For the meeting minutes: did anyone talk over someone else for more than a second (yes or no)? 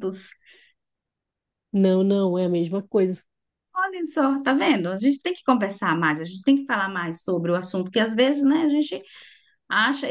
no